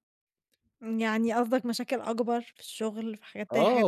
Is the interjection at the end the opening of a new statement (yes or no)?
yes